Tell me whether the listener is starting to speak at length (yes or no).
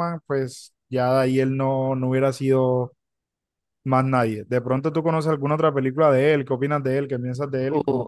yes